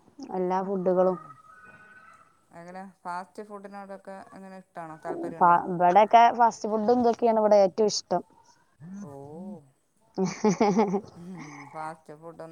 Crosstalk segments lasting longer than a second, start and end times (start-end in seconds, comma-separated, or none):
none